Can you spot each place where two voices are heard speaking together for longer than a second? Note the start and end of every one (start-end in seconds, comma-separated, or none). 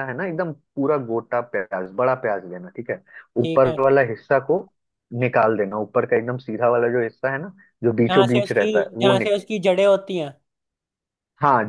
8.0-9.4